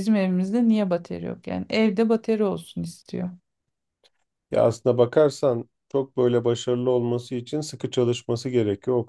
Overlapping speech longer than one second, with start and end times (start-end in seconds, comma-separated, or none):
none